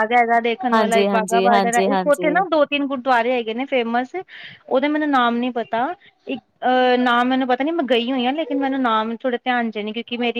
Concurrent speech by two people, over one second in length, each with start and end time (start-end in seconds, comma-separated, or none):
0.7-2.4